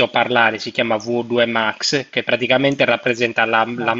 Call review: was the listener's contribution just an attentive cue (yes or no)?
yes